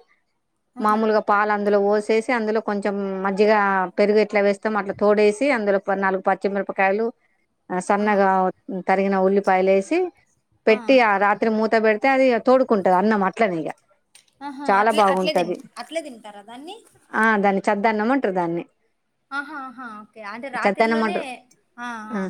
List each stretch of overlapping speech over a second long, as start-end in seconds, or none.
none